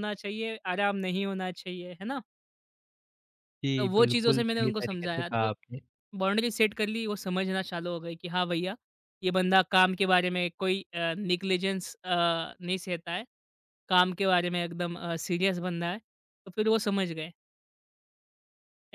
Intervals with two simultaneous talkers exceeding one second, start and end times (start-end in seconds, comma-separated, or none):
3.8-5.5